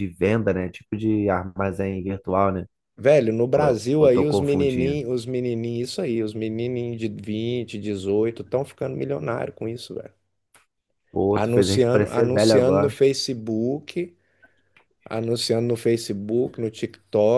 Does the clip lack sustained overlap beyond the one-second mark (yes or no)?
no